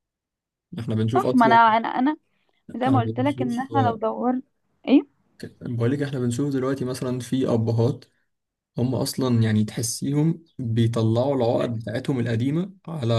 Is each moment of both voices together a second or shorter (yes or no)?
no